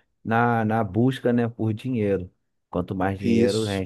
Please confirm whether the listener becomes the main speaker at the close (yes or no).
no